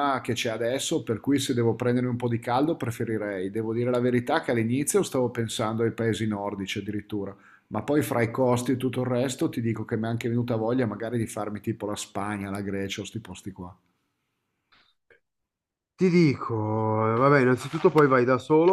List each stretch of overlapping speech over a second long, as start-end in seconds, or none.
none